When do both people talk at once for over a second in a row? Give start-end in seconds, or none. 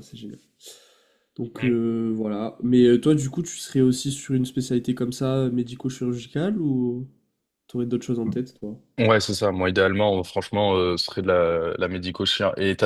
none